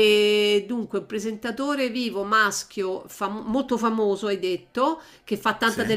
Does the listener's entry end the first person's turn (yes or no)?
no